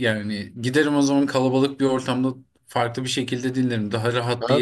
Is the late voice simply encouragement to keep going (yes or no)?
no